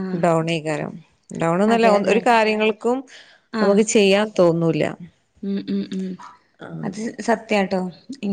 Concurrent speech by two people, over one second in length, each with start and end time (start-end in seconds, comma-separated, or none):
none